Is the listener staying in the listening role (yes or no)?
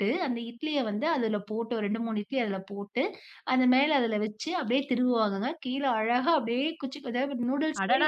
no